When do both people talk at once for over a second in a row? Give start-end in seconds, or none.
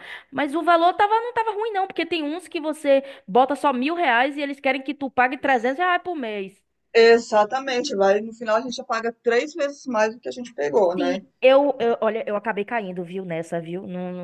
none